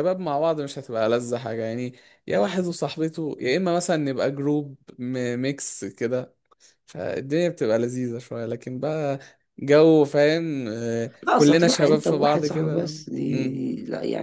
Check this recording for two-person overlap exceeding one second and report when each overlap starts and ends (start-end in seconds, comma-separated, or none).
11.2-13.6